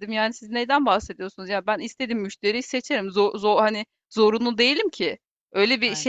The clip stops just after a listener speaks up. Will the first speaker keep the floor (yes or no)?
yes